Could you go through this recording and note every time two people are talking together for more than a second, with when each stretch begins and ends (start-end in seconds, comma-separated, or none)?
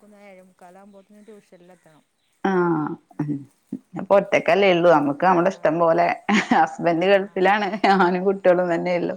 none